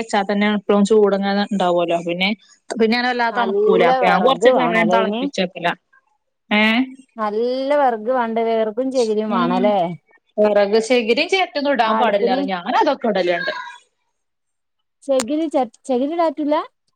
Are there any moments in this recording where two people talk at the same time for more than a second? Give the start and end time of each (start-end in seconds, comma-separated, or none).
3.4-5.2